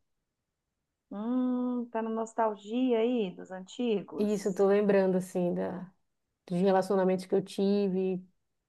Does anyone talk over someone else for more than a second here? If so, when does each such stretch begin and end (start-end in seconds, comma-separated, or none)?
none